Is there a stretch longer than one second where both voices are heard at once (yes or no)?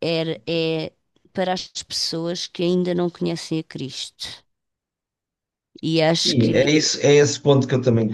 no